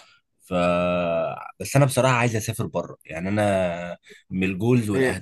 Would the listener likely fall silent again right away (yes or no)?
no